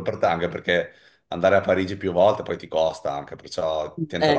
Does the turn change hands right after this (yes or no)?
yes